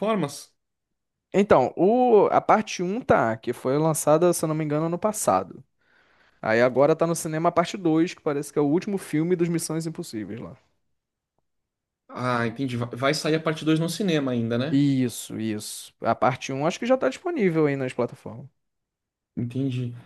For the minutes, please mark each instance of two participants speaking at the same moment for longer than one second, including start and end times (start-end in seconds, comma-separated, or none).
none